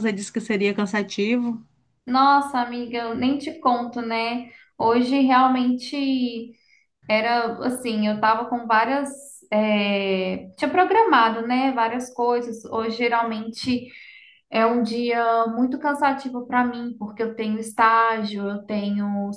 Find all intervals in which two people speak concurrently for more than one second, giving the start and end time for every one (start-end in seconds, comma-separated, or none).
none